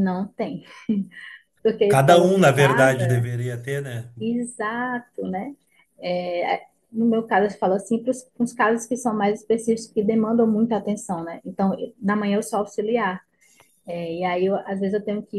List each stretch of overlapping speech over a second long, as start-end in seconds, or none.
1.9-3.3